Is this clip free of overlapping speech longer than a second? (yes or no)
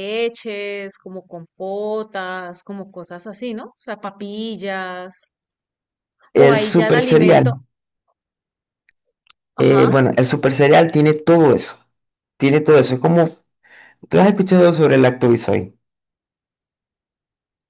no